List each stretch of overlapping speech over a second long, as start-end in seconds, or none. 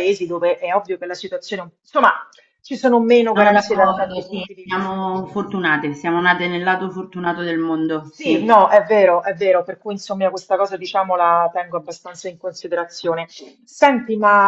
3.2-5.0